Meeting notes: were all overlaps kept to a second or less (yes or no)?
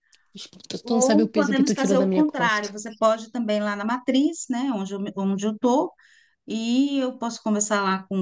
no